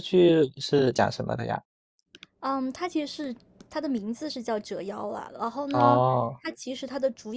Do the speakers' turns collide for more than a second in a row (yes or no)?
no